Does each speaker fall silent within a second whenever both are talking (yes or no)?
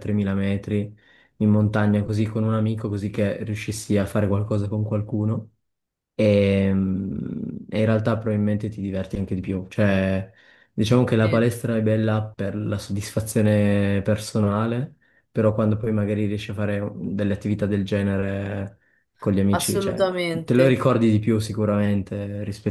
no